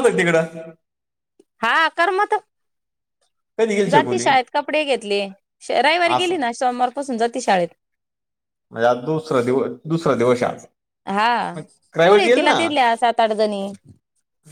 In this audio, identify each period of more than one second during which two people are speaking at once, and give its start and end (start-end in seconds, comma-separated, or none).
none